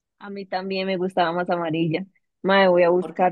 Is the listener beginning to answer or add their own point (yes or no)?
no